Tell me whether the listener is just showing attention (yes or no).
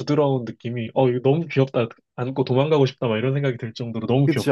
no